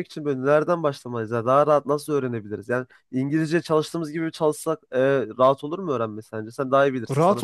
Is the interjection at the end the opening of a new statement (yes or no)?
yes